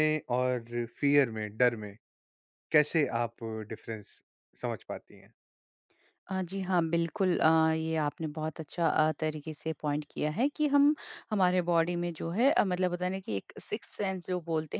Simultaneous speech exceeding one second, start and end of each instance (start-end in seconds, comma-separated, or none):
none